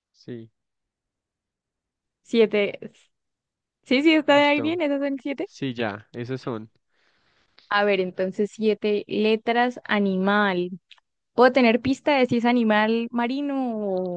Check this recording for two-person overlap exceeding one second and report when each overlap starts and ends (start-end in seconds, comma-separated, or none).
none